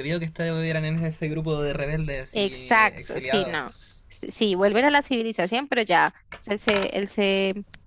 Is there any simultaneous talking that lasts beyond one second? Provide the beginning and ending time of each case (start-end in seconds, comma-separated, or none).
2.3-3.6